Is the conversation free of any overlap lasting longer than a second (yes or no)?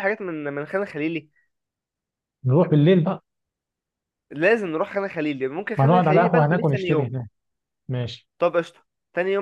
no